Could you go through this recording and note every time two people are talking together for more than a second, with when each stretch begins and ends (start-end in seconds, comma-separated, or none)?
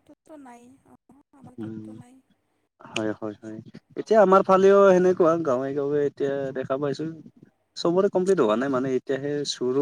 none